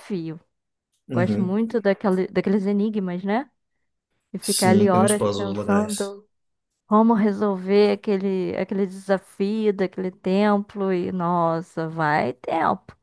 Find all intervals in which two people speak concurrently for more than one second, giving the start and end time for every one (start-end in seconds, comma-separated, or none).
4.4-6.1